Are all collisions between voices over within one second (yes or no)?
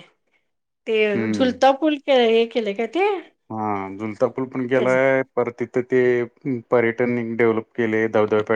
yes